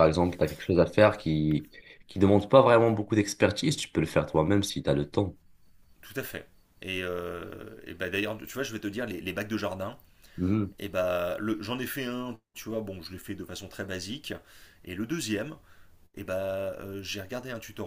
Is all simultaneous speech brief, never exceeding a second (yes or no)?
yes